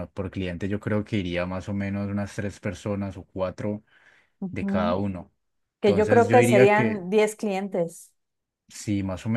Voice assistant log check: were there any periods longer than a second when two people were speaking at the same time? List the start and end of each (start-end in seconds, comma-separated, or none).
5.8-7.0